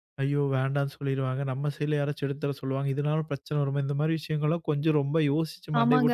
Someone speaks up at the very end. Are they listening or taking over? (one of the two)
taking over